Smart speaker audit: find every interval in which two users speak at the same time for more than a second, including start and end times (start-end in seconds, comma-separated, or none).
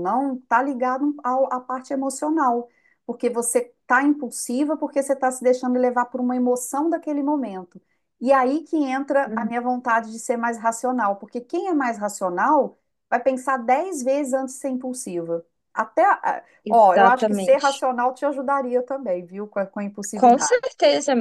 16.6-17.8